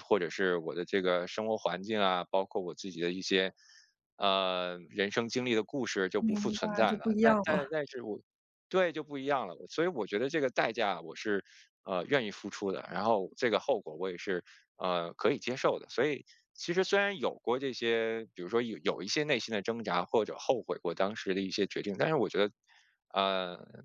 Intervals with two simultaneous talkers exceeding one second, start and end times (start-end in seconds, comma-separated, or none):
6.2-7.7